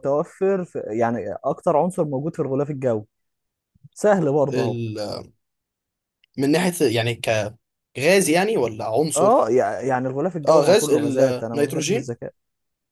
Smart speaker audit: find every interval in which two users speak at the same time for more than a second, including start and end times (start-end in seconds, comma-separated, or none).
10.5-12.0